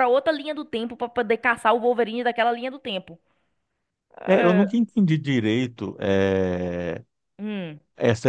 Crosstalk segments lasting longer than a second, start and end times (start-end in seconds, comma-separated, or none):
none